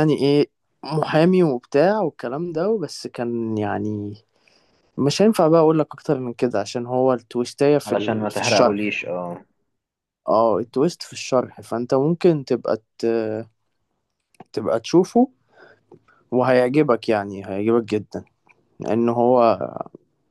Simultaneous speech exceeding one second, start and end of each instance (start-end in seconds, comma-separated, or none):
7.8-9.1